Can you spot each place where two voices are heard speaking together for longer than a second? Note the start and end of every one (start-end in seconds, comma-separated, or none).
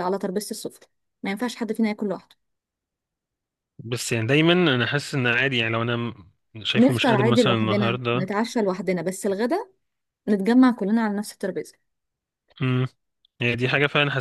6.8-8.3